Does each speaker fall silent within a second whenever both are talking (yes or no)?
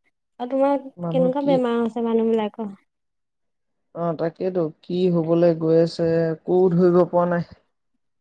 yes